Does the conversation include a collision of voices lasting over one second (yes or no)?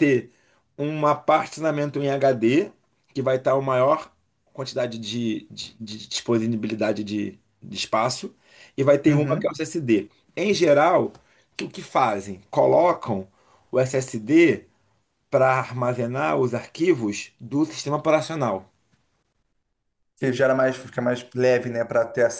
no